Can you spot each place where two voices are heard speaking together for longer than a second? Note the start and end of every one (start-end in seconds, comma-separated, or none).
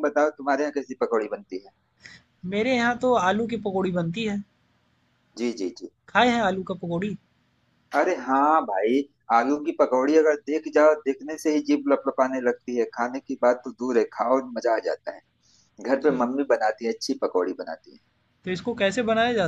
none